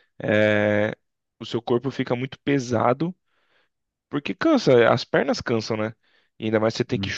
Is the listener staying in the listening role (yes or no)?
yes